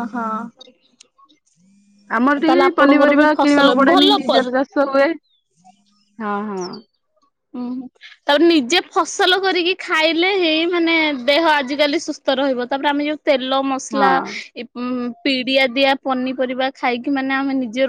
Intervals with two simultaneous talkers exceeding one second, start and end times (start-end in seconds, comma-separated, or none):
2.5-4.4